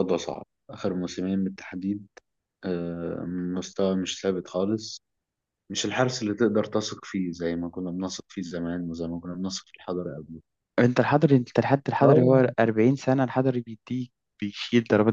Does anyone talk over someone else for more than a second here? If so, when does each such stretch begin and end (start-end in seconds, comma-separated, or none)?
none